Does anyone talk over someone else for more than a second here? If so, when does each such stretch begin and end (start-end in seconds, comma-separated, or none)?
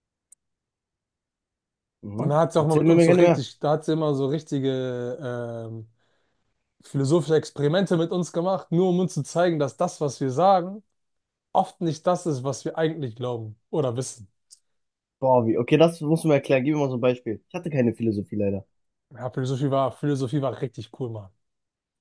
2.2-3.4